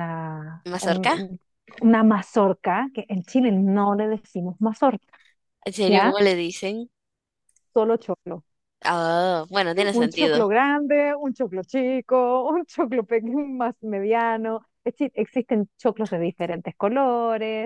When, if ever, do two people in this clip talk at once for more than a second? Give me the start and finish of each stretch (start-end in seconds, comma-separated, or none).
none